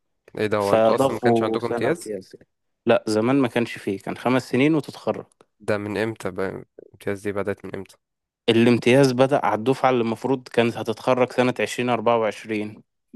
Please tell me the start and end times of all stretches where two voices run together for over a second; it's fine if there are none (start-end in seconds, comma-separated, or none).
0.6-2.1